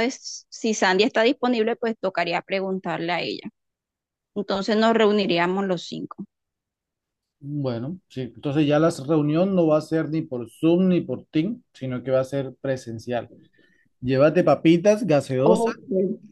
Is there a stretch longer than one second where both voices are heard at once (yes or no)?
no